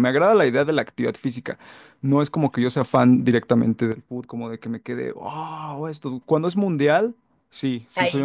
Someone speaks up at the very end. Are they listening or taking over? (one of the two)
listening